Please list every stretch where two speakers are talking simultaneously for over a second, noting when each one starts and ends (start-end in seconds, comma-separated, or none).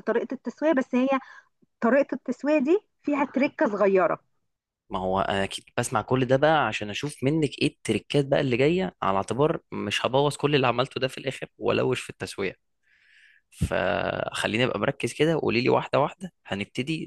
none